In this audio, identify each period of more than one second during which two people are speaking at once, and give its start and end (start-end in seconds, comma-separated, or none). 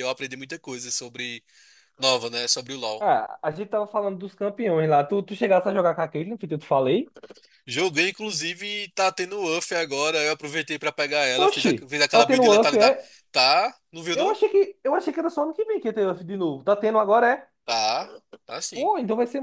11.4-13.1